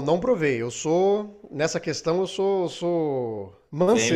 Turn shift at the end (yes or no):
yes